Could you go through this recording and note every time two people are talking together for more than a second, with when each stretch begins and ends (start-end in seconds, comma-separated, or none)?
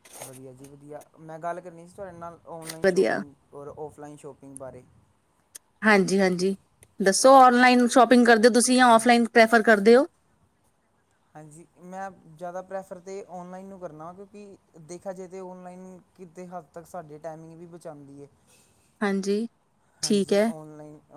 none